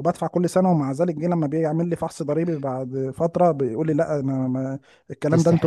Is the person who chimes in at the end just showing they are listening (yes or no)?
yes